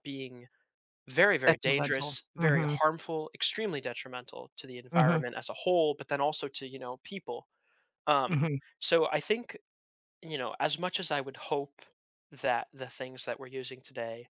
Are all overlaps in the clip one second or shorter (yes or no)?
no